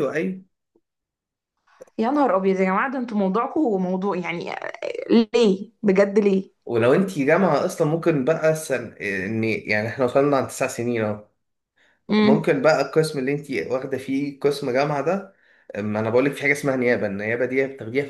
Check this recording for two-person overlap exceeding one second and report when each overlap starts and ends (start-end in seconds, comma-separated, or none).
none